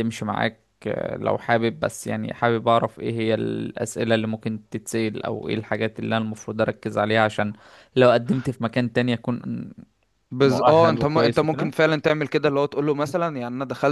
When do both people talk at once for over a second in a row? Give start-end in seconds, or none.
10.4-11.7